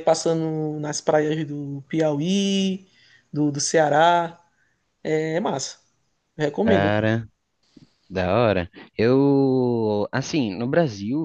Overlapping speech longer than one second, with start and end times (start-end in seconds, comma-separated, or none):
none